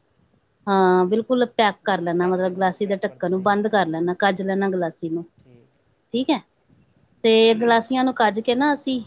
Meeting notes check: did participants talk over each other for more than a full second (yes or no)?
yes